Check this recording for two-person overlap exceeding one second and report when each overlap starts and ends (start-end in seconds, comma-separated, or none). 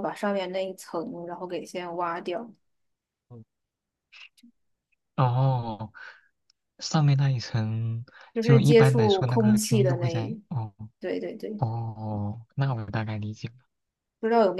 8.3-10.4